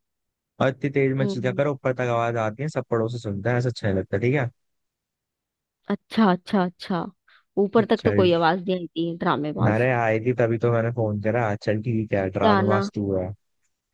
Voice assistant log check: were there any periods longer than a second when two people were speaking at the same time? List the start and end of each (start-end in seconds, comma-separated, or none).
none